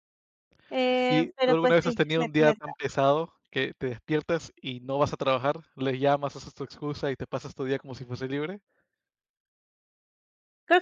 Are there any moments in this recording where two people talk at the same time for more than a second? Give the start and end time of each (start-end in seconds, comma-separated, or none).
1.1-2.8